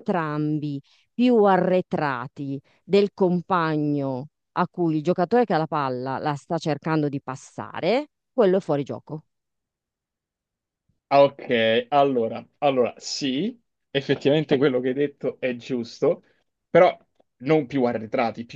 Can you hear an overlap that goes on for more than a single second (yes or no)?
no